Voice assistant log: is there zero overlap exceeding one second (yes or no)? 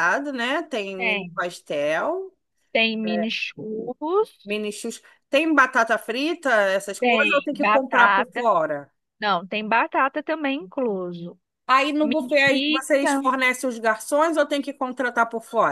no